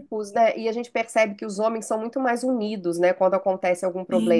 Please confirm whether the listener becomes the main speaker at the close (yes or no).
yes